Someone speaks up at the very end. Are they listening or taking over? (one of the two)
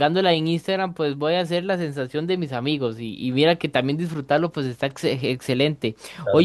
listening